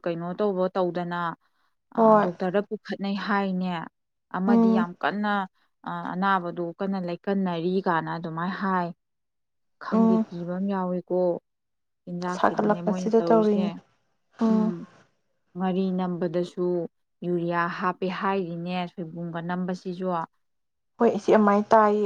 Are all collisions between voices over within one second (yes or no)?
no